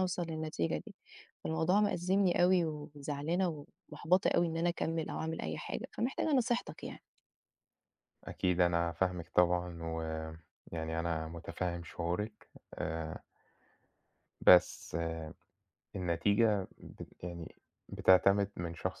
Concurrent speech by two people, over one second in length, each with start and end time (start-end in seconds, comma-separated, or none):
none